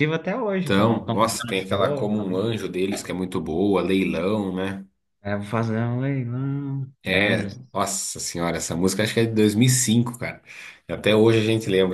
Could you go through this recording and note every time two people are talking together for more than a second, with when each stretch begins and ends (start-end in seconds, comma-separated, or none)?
0.6-2.4